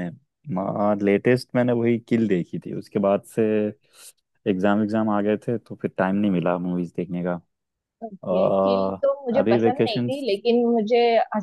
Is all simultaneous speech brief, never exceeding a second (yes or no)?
no